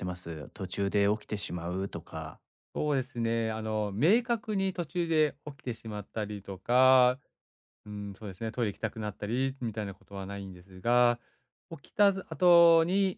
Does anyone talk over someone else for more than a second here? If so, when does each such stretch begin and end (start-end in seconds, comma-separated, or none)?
none